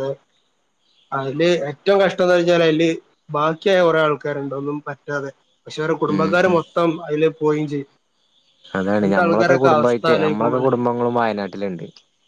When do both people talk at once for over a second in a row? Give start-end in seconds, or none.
none